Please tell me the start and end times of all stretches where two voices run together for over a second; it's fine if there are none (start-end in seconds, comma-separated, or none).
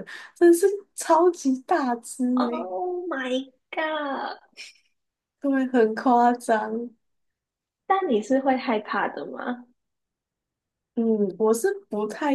none